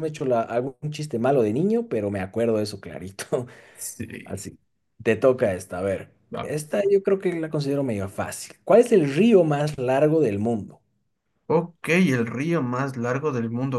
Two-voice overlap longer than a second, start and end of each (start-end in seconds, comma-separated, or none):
none